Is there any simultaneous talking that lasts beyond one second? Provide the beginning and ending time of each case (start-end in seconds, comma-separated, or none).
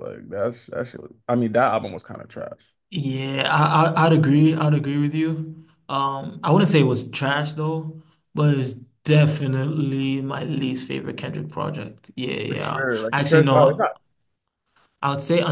12.5-13.9